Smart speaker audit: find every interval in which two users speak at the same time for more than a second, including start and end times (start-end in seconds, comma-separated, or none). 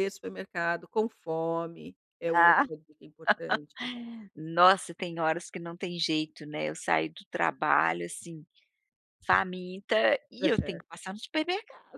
none